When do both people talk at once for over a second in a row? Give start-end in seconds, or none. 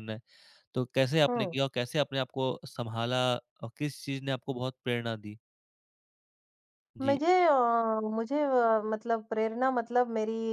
none